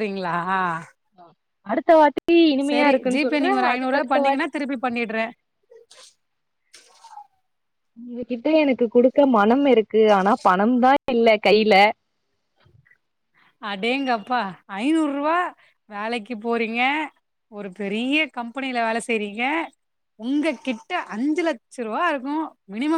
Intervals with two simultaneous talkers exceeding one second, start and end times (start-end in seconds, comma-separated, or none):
2.7-4.5